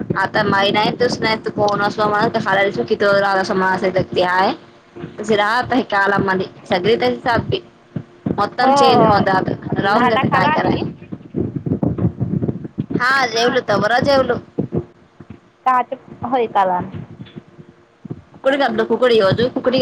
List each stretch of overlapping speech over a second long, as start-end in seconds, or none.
none